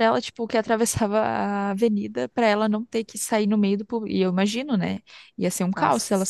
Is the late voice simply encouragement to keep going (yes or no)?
yes